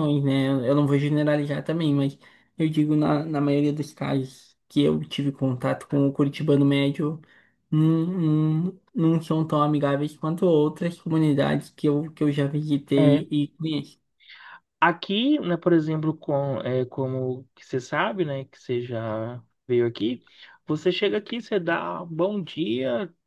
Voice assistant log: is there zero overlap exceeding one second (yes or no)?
yes